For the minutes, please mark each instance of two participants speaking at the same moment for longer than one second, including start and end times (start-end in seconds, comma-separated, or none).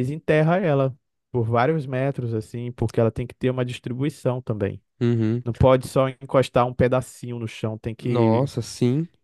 none